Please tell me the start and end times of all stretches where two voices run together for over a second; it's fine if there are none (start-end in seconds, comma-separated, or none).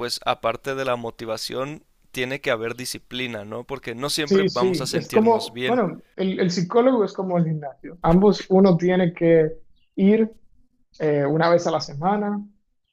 4.2-5.8